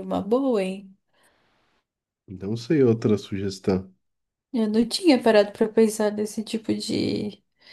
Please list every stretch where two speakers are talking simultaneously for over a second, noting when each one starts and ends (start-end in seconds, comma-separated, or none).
none